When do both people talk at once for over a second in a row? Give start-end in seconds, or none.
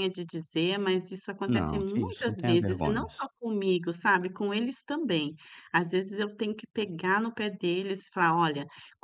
1.5-3.1